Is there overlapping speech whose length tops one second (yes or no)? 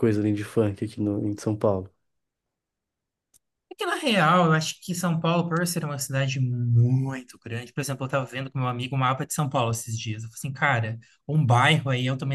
no